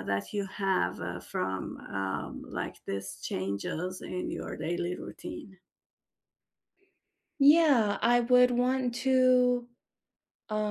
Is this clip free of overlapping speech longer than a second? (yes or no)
yes